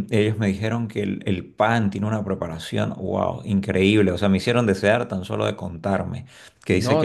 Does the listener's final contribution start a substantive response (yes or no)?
yes